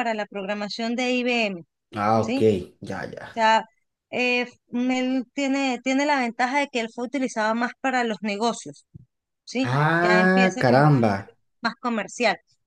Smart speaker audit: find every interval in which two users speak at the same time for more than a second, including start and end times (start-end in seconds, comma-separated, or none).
9.6-11.1